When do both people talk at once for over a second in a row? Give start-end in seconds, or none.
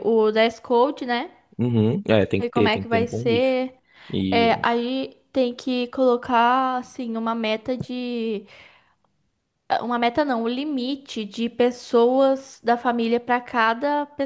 2.4-3.6